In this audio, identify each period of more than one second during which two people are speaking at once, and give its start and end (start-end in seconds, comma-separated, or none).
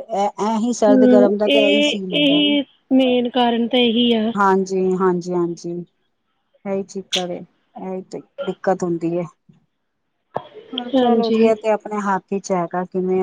0.9-2.5